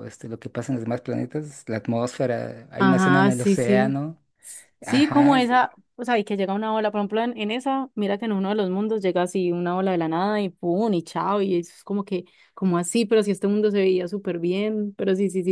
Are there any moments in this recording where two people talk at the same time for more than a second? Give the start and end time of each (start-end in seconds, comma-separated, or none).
2.8-4.0